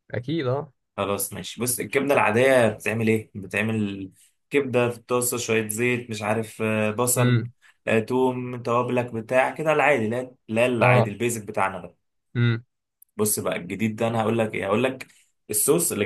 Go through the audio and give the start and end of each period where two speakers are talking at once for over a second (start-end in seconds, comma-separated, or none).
none